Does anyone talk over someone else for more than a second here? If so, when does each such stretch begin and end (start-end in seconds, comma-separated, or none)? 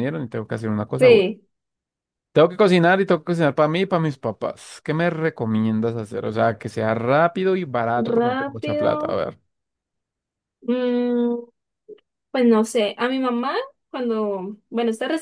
8.0-9.2